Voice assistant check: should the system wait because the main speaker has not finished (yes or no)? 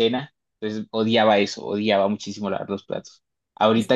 yes